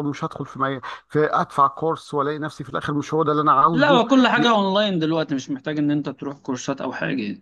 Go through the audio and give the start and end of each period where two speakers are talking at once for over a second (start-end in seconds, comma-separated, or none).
none